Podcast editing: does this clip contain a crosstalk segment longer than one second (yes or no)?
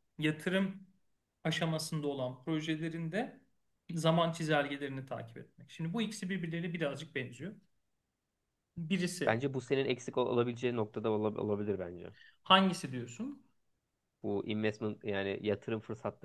no